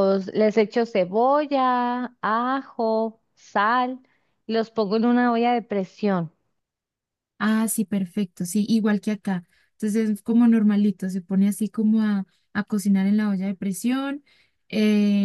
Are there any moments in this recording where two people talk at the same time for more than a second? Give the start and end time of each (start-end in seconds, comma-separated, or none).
none